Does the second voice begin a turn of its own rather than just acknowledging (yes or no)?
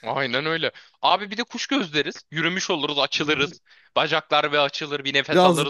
yes